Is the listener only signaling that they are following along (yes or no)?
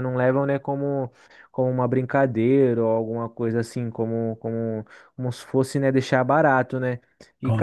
yes